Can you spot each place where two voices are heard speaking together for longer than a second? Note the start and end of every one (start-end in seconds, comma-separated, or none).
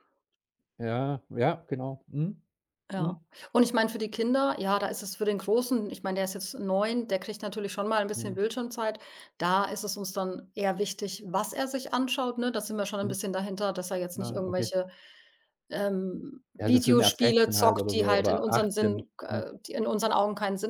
16.6-19.5